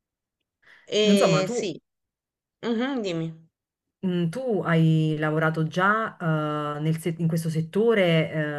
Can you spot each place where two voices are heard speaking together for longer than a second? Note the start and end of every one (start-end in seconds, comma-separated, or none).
none